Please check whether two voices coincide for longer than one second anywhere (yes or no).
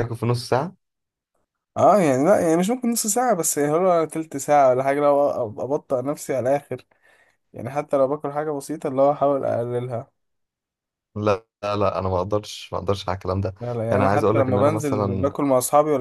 yes